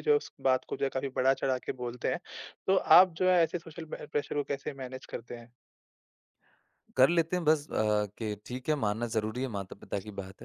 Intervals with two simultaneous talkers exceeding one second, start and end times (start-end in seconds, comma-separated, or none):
none